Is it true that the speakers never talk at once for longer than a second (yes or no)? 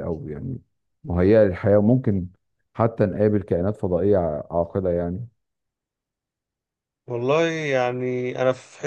yes